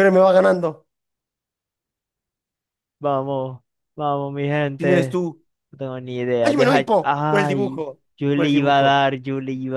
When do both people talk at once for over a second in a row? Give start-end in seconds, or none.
6.4-9.0